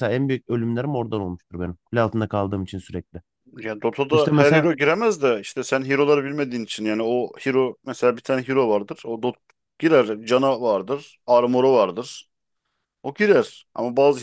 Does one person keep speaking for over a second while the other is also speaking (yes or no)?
no